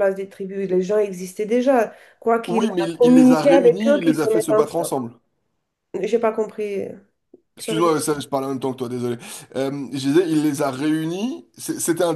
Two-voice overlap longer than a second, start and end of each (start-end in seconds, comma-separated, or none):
2.5-4.9